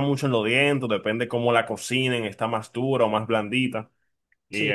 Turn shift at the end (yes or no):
no